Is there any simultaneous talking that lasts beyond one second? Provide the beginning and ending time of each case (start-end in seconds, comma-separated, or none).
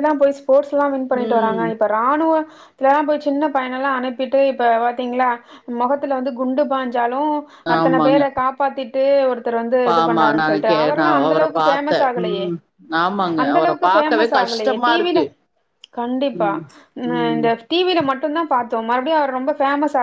10.0-12.4, 13.4-15.2